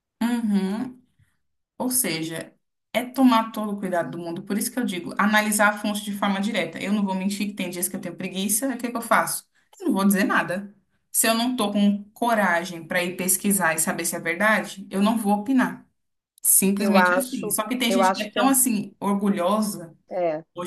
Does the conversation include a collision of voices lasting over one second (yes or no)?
yes